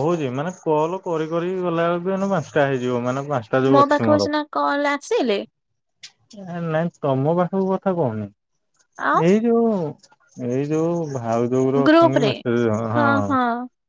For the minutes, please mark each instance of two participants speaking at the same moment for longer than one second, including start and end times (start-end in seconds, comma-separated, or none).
none